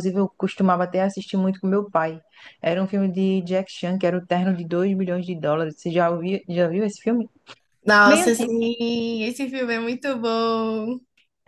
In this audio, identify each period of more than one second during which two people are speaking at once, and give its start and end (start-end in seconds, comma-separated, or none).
none